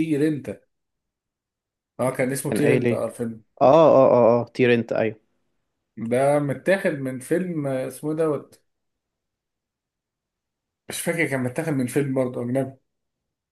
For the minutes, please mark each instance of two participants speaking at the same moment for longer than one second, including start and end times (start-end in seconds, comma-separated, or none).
none